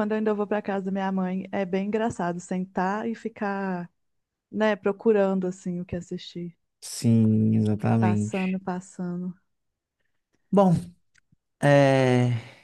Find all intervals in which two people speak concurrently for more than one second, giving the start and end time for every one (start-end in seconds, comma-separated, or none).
none